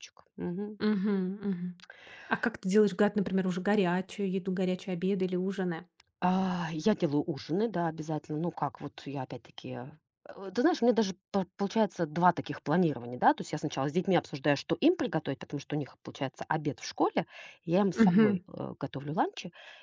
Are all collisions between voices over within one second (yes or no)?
yes